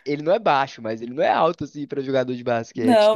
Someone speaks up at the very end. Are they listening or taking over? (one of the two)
taking over